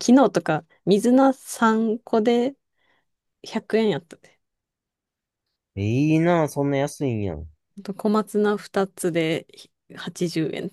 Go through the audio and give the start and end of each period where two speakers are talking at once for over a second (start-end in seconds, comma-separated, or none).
none